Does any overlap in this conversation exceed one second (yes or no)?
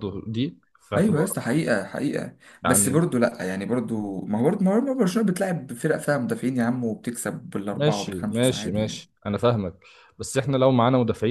yes